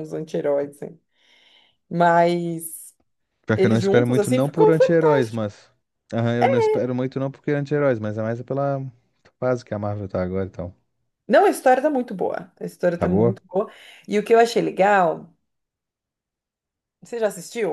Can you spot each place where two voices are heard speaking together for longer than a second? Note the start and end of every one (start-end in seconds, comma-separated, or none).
3.5-5.4